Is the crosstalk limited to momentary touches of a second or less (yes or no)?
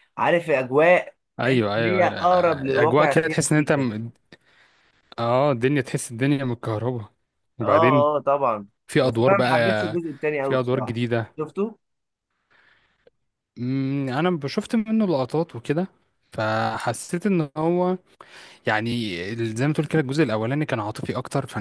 no